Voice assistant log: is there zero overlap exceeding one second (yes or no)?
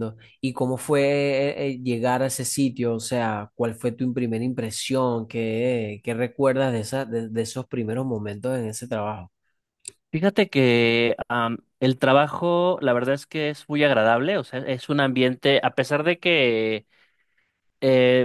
yes